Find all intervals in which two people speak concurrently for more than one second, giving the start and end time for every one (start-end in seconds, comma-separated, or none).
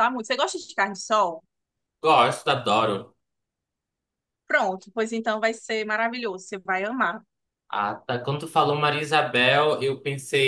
none